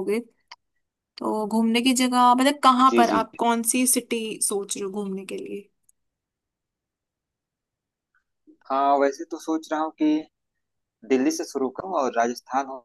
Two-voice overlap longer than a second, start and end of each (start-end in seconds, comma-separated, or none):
none